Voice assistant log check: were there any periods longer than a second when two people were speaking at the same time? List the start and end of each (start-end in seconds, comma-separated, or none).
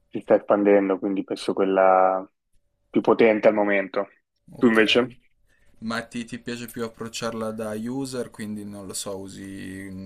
none